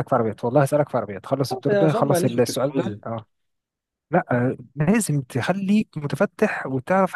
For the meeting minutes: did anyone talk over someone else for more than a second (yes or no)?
yes